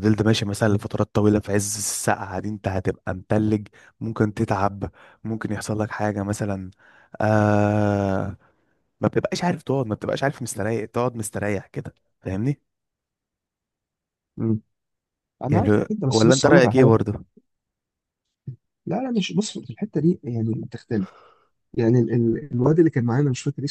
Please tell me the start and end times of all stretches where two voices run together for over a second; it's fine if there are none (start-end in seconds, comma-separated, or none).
15.5-16.9